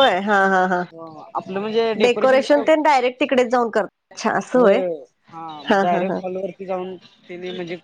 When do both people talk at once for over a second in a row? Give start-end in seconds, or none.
2.0-3.3